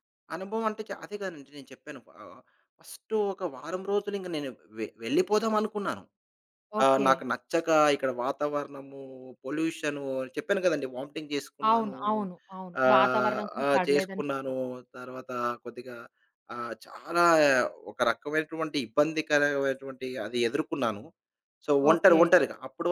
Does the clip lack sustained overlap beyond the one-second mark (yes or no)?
no